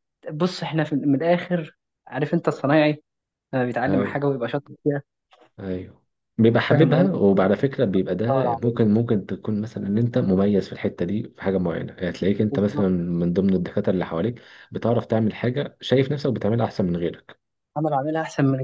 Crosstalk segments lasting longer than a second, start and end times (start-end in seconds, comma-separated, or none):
none